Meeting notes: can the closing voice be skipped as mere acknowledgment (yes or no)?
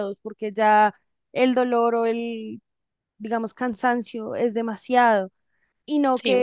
yes